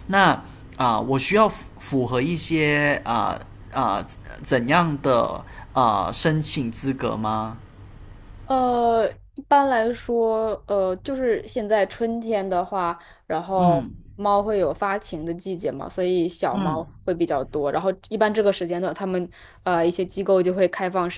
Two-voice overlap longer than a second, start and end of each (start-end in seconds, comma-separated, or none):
none